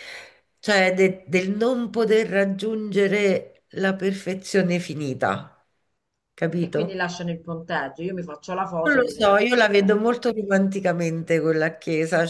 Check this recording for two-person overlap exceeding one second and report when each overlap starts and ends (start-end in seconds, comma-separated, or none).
8.8-10.1